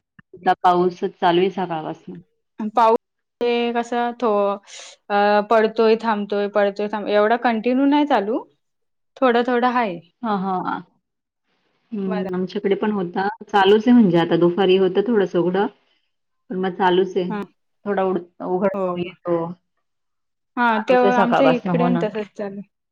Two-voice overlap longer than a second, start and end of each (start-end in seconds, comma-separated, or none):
20.7-22.0